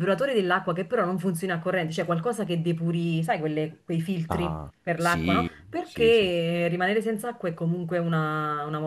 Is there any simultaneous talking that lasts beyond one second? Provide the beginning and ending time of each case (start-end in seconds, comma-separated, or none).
4.3-6.3